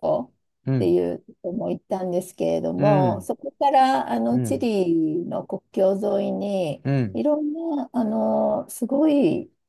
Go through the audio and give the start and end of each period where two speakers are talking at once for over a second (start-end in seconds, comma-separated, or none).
none